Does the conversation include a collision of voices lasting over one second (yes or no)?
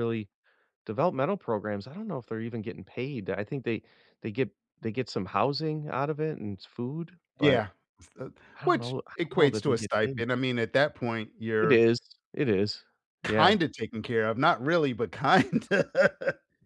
yes